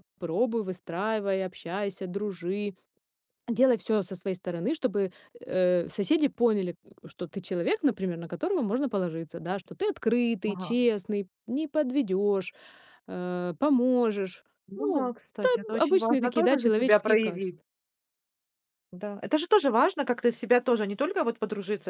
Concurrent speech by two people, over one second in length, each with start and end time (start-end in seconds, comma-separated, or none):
14.7-17.6